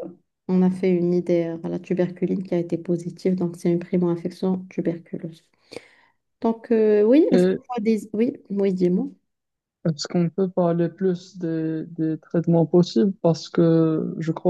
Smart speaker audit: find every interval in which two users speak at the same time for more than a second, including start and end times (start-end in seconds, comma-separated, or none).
none